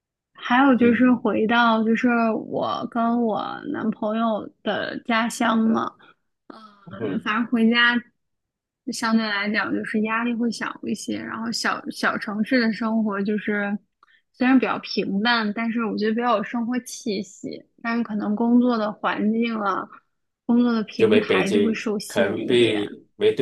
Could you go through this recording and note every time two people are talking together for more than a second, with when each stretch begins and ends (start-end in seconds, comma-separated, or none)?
21.0-22.9